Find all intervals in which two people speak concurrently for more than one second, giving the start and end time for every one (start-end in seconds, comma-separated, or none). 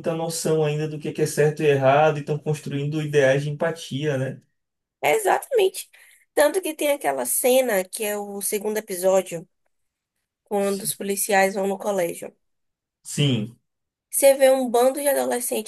none